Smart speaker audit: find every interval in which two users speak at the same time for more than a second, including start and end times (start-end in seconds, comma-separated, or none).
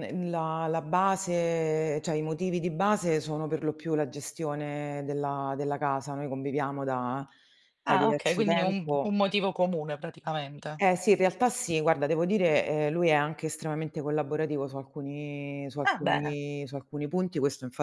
7.8-9.2